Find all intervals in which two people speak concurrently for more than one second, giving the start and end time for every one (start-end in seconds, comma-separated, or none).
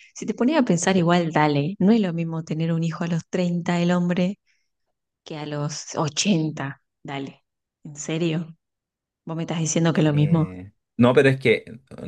none